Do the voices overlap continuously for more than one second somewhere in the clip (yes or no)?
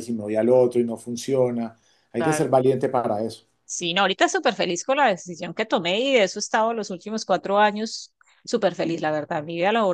no